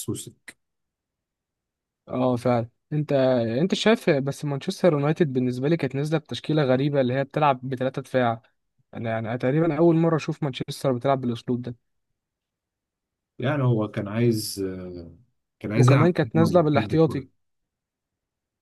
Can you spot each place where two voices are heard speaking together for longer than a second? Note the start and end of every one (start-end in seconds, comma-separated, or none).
15.8-17.0